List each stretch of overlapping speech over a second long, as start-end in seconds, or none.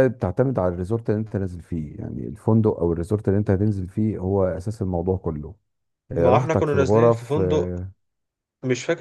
6.2-7.8